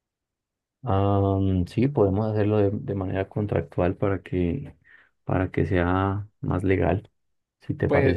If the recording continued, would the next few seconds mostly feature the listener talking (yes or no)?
yes